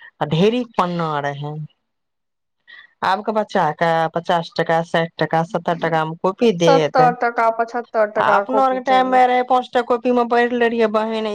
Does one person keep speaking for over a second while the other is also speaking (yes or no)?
yes